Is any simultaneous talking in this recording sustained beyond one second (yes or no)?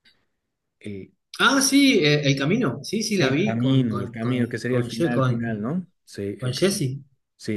yes